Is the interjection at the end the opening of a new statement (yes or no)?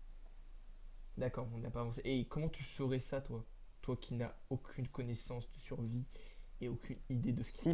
yes